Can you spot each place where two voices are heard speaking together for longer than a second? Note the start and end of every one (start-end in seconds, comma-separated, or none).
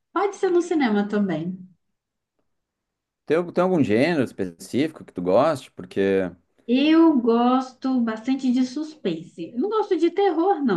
none